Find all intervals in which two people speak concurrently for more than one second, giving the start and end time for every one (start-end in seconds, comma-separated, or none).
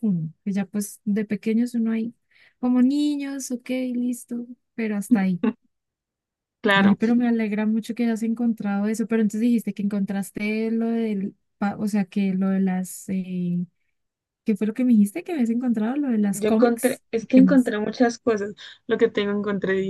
16.3-17.7